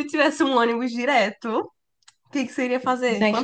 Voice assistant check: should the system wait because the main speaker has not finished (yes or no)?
no